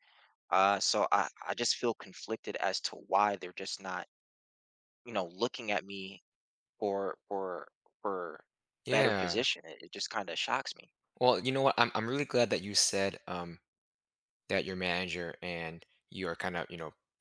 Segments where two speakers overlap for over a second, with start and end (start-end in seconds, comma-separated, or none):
none